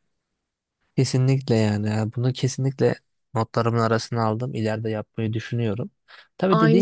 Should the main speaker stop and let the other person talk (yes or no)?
no